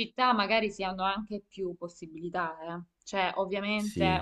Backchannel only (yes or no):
yes